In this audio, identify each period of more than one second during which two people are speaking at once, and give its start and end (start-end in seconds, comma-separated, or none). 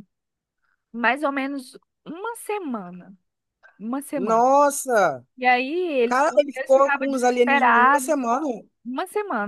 6.0-8.1